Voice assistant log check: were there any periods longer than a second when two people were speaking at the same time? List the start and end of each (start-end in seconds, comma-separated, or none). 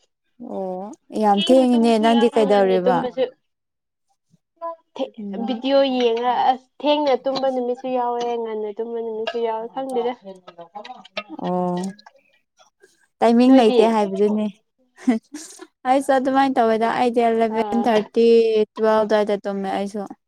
1.3-3.0